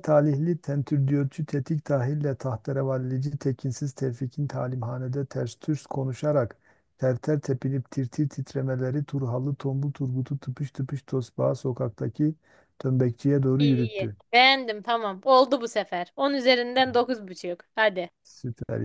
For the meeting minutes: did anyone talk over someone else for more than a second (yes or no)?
no